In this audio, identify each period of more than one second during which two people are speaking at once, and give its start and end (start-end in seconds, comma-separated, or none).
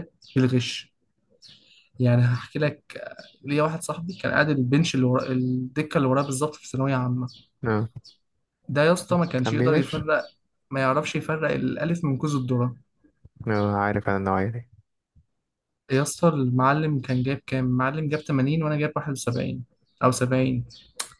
none